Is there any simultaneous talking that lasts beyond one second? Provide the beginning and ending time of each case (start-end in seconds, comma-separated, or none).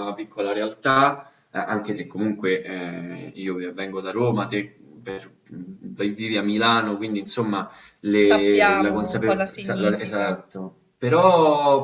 8.2-10.4